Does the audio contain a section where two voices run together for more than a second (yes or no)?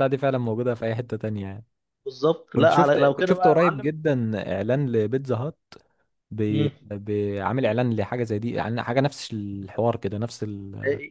yes